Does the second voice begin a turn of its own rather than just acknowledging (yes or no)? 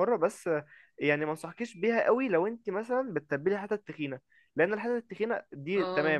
no